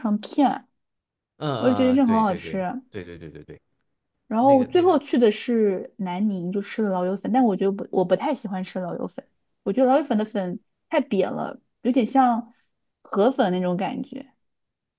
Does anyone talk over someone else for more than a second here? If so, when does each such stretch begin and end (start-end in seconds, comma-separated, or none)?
1.6-2.8